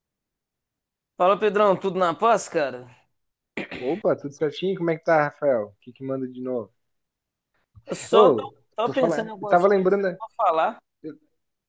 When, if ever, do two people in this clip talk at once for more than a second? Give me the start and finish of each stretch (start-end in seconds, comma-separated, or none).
8.1-10.2